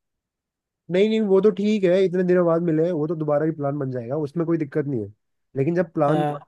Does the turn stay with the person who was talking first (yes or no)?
yes